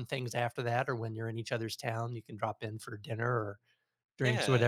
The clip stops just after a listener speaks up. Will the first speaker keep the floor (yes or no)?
yes